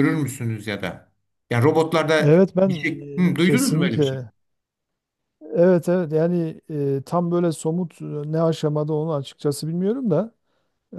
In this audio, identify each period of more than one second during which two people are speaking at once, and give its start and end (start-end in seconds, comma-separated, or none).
2.2-4.2